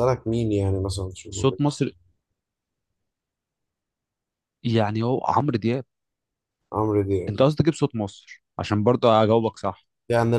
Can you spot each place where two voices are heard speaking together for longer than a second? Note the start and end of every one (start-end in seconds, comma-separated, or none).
none